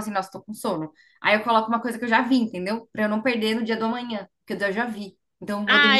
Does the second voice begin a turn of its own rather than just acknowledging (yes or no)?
yes